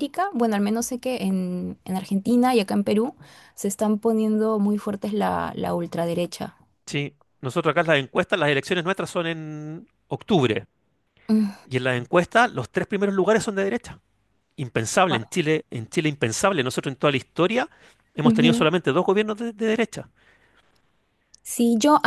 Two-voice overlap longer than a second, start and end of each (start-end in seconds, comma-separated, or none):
none